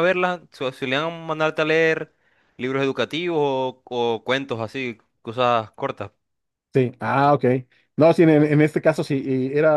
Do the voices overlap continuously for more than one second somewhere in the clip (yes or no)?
no